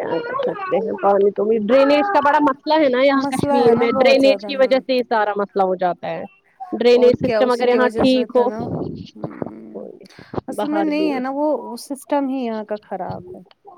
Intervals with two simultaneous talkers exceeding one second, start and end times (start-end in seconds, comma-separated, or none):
3.2-4.8, 7.0-8.5